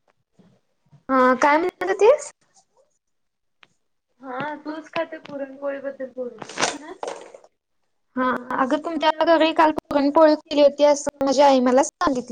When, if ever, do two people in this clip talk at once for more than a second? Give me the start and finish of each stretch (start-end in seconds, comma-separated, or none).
9.8-11.8